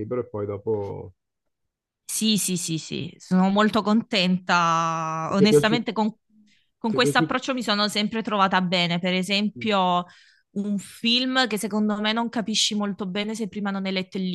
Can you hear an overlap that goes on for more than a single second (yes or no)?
no